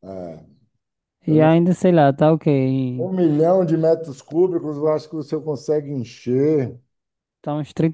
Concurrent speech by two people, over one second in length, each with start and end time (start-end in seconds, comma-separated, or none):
none